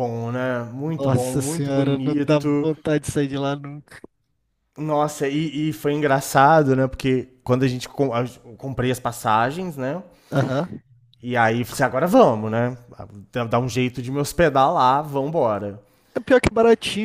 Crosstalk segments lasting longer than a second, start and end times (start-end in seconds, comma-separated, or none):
1.0-2.7